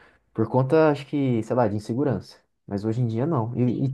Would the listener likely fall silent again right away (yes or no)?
yes